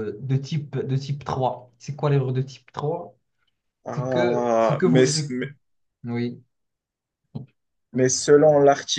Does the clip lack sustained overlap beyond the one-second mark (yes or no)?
no